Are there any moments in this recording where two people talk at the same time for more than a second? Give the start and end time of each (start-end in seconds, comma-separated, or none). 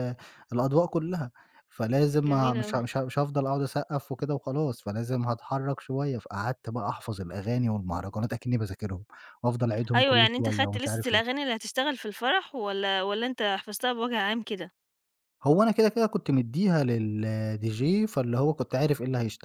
9.9-11.2